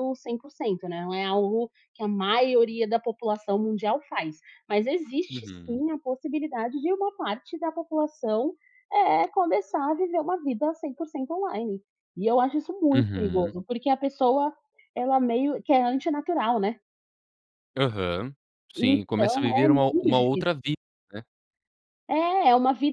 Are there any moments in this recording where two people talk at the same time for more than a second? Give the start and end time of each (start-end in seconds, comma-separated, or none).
18.8-20.6